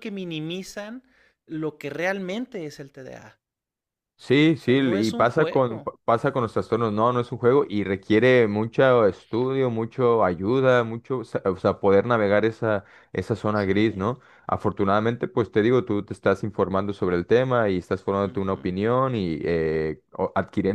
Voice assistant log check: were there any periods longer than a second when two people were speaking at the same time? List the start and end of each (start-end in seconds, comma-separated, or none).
4.5-5.9